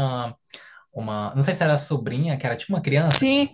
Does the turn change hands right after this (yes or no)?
yes